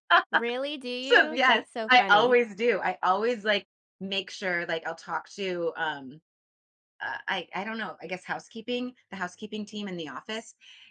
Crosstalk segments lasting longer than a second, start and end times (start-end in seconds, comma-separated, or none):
1.0-2.4